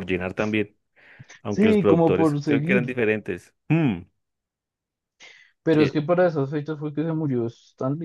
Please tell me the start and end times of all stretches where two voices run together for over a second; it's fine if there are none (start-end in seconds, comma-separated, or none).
1.5-3.0